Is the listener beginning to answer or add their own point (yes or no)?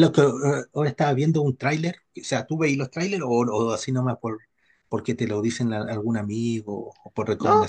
yes